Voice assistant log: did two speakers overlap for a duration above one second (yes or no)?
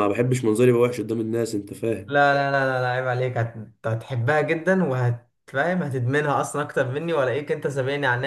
no